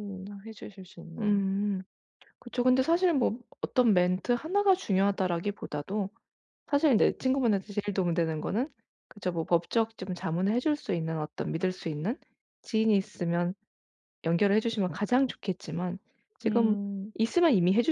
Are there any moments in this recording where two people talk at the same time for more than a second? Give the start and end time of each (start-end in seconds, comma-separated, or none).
none